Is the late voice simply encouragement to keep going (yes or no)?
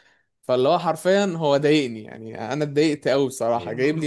no